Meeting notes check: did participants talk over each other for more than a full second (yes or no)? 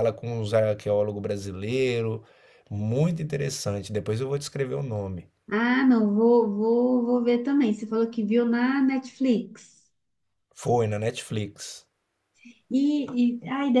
no